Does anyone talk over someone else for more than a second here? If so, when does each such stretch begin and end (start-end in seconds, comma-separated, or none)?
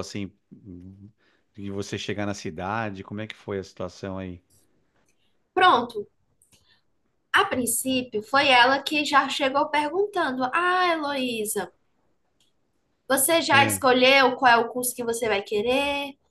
none